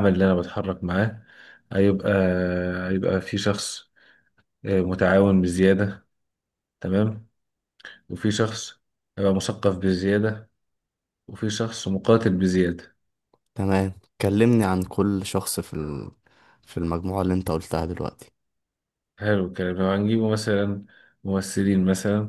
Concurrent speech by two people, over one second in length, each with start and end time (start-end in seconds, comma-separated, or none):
none